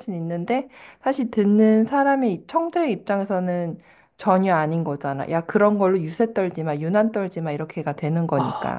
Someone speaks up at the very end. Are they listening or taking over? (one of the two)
taking over